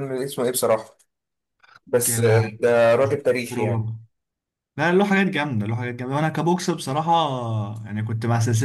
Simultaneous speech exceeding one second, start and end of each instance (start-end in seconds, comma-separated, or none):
2.1-3.9